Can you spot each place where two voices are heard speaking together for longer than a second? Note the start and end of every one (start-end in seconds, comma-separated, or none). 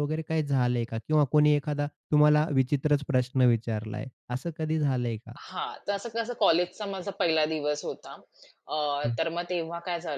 none